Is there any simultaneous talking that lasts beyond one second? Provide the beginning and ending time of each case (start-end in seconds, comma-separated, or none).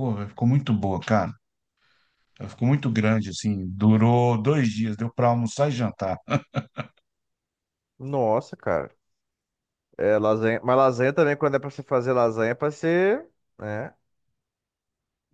none